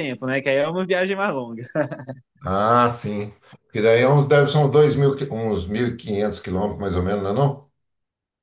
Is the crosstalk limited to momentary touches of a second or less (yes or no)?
yes